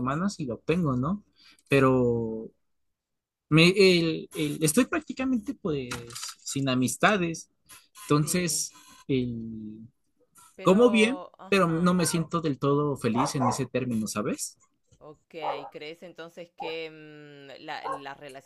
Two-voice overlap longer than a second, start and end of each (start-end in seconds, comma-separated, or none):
10.6-11.9